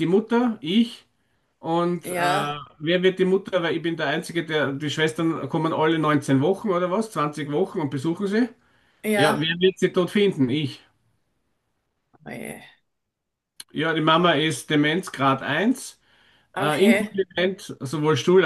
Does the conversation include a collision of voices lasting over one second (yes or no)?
no